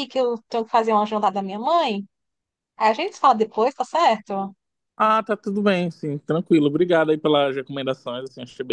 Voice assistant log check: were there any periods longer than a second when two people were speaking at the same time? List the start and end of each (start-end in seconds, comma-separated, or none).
none